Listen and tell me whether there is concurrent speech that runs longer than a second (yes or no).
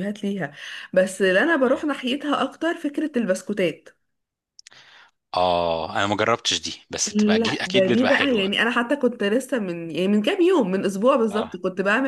yes